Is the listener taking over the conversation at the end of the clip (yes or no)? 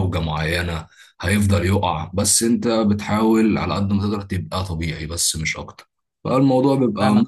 yes